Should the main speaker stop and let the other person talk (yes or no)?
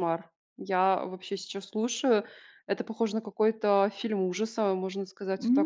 yes